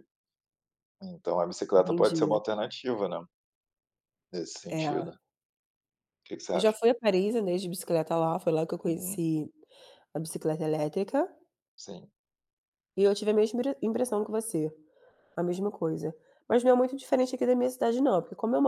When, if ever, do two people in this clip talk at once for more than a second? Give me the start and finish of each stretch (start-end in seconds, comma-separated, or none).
none